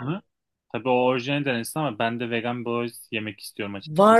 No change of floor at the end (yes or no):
no